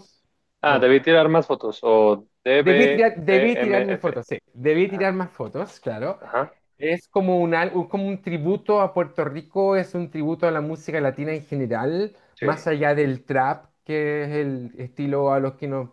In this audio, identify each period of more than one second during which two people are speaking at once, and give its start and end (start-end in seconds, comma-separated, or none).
2.6-4.2